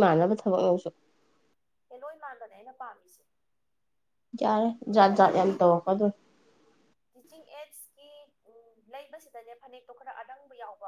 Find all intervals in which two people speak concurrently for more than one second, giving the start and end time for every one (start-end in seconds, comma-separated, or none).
none